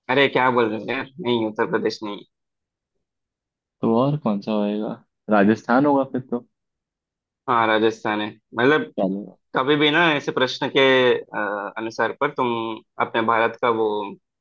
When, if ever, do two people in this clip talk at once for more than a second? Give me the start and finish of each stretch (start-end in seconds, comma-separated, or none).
none